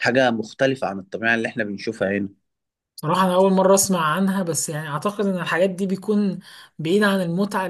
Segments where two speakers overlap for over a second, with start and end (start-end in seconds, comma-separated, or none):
none